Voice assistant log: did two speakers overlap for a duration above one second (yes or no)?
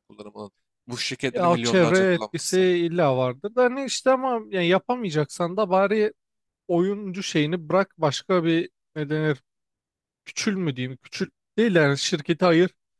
yes